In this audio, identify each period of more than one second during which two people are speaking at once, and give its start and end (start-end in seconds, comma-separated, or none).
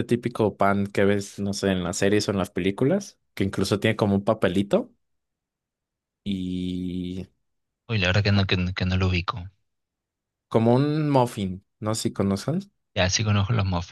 none